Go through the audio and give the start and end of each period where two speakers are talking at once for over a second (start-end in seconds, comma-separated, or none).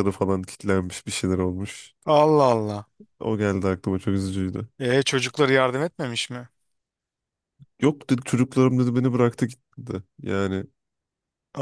none